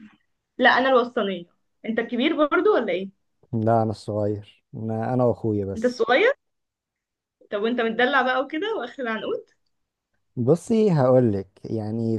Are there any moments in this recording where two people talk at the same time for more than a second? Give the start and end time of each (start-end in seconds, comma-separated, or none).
none